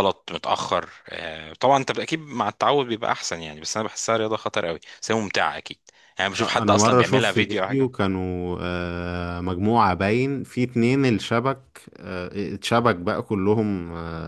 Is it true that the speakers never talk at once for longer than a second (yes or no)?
no